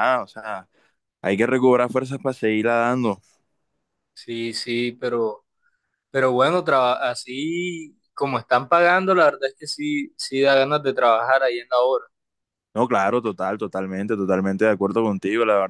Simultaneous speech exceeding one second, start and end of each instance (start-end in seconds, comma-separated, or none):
none